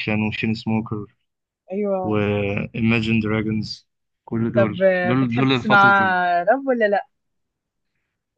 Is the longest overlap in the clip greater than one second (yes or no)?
yes